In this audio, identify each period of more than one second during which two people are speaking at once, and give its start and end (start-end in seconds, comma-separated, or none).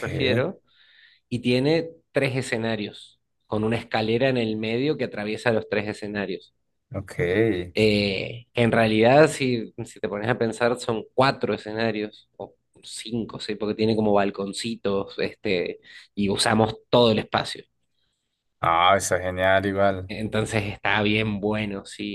none